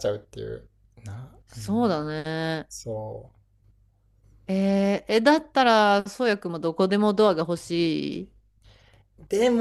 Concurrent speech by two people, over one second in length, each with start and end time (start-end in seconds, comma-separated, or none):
none